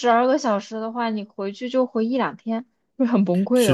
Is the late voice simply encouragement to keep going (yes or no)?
no